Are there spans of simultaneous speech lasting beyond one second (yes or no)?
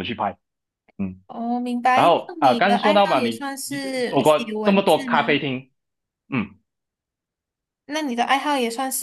yes